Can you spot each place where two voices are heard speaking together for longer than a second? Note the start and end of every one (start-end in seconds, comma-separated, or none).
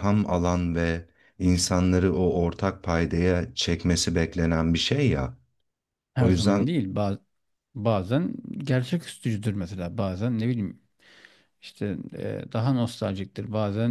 none